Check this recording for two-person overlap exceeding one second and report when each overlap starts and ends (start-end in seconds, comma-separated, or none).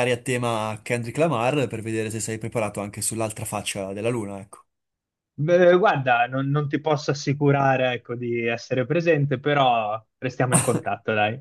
none